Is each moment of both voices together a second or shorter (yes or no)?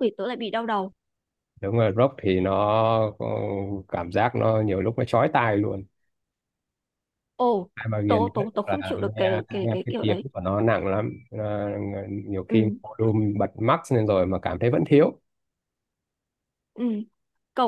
no